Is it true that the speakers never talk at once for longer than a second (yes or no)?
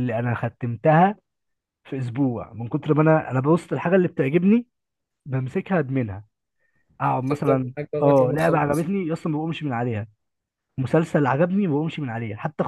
no